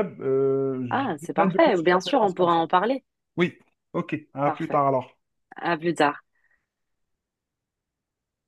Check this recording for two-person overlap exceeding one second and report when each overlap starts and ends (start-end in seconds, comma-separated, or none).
0.9-2.6